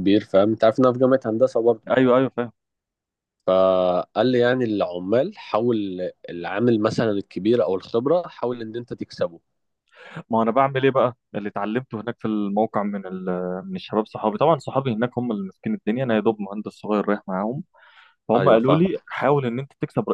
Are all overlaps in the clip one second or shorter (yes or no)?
yes